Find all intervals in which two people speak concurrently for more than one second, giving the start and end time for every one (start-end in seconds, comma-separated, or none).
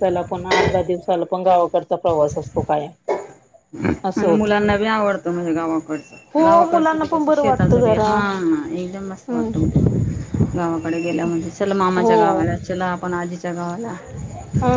6.3-8.2